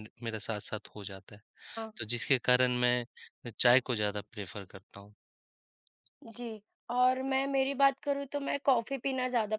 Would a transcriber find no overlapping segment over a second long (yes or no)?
yes